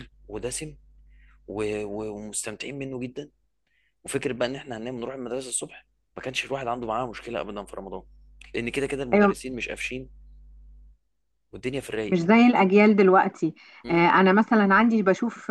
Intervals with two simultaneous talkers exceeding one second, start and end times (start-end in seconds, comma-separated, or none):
none